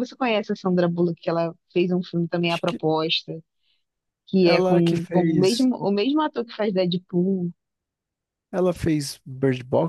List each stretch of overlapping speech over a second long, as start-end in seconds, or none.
4.4-5.7